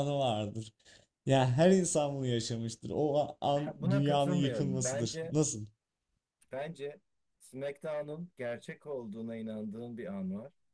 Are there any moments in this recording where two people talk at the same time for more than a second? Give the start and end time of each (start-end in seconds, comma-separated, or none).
3.5-5.3